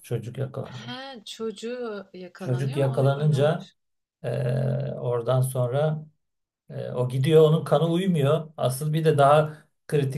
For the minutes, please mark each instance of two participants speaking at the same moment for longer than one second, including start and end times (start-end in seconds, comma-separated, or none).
2.4-3.7